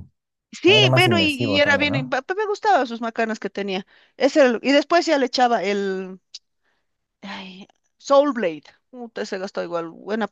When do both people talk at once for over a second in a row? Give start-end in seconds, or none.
0.7-2.2